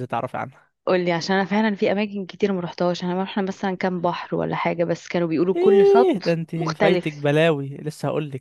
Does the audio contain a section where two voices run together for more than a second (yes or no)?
yes